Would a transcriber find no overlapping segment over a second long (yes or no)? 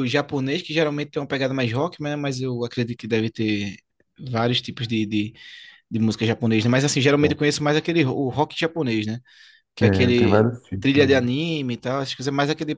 no